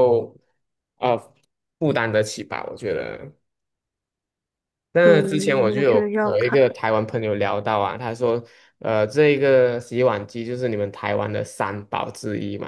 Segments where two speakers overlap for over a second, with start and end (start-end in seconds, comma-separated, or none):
5.0-6.6